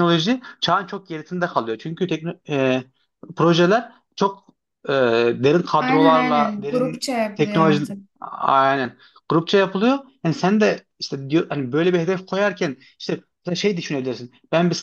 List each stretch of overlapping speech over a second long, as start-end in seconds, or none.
5.8-7.8